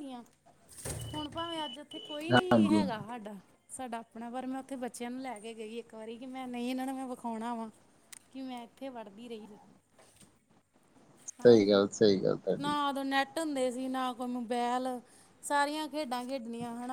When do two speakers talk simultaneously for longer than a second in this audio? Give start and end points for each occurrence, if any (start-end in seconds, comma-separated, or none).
none